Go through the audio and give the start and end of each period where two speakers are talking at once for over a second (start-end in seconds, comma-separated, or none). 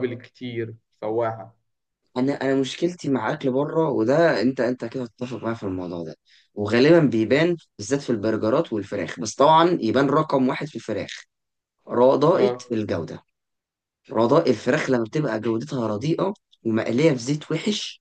none